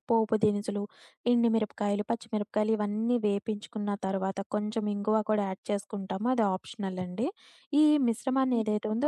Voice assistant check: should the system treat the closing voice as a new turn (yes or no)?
yes